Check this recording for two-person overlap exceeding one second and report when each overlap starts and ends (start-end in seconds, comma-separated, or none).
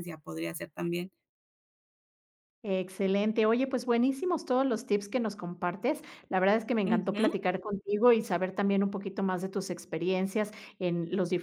none